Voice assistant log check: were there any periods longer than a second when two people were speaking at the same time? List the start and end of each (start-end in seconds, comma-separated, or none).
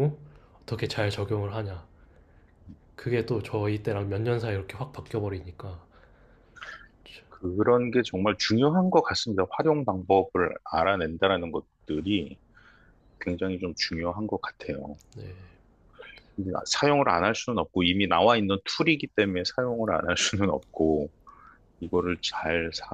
none